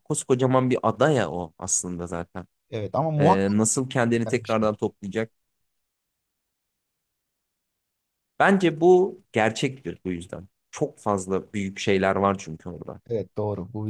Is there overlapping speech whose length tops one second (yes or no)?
no